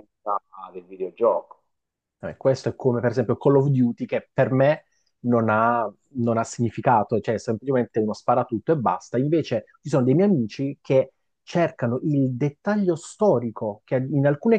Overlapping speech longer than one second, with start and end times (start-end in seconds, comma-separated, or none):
none